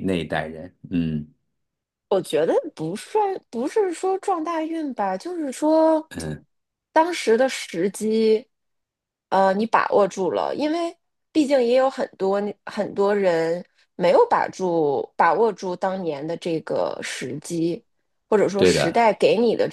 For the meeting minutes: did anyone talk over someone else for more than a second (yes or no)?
no